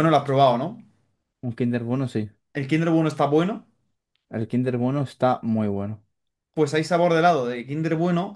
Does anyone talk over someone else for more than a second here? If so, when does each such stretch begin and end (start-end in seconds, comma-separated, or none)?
none